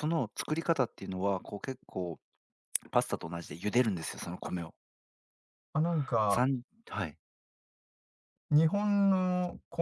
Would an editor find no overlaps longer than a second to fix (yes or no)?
yes